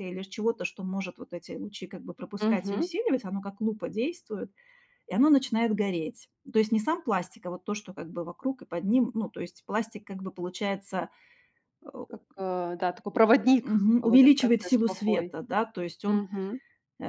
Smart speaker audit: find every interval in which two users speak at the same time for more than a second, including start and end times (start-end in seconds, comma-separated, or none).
13.6-15.3